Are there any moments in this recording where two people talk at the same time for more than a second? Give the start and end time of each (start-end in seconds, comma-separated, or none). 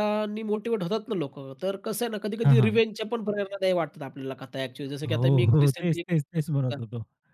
5.1-6.8